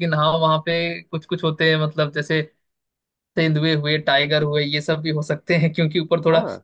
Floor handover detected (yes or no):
no